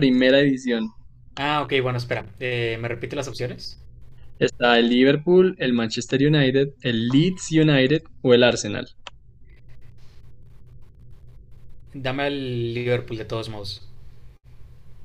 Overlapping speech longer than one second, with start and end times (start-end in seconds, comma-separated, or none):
none